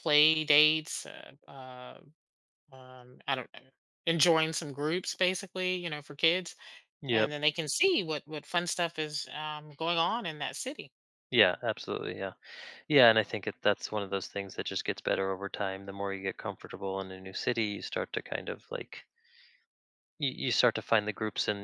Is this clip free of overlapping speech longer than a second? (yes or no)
yes